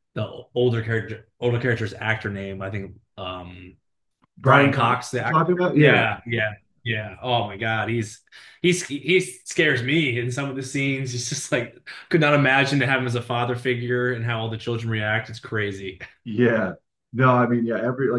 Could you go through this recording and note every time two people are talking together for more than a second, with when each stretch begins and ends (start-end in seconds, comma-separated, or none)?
4.4-6.0